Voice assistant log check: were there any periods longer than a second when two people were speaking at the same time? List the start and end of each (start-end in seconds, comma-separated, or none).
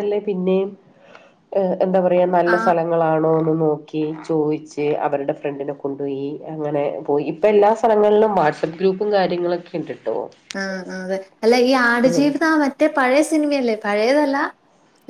none